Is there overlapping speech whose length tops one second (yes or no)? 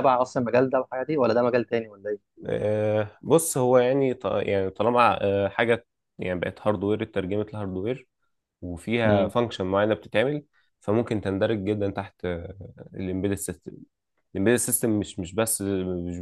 no